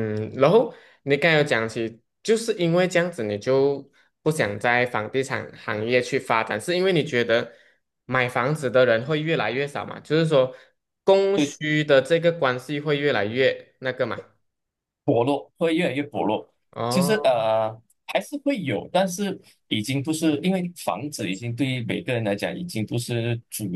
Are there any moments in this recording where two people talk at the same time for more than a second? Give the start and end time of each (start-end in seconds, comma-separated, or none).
none